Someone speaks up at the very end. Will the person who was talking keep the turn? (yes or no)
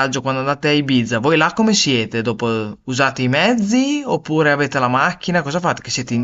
no